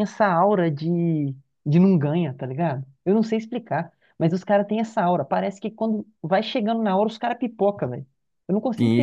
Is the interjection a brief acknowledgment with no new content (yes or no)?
no